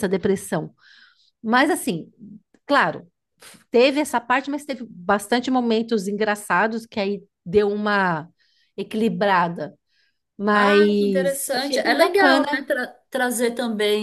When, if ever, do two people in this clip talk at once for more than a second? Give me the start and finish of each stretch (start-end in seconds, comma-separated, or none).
10.5-12.5